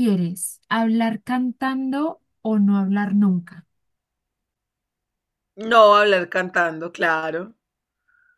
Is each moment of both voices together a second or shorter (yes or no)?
yes